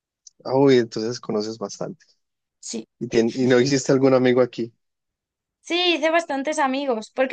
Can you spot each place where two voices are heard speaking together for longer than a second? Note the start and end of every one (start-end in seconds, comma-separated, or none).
none